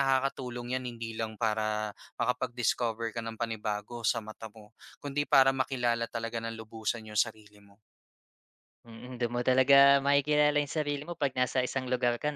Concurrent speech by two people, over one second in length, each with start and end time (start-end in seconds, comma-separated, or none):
none